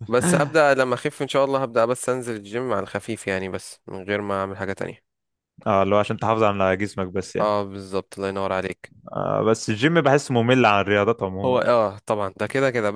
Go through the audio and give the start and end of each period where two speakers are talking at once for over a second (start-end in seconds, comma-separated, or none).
none